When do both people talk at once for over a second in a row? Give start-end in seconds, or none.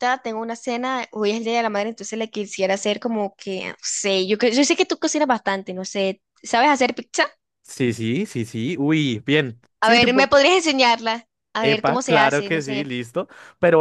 11.6-12.9